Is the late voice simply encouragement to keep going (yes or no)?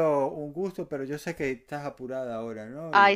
no